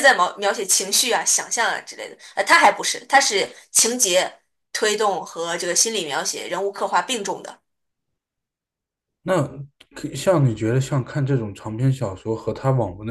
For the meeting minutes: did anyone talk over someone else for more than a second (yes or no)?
no